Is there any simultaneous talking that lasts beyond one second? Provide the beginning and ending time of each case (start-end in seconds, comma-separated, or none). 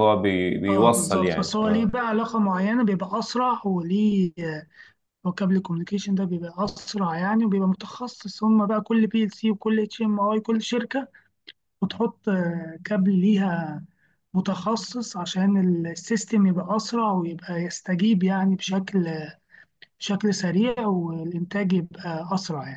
0.7-1.9